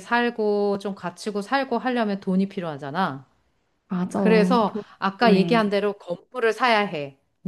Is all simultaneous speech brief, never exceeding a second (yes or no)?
no